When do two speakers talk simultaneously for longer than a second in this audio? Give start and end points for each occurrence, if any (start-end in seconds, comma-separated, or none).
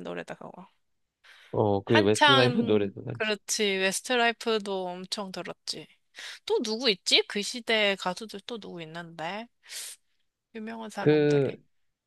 1.8-3.3